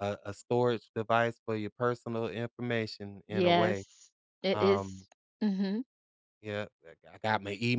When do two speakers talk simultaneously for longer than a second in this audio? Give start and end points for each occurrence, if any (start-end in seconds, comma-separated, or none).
none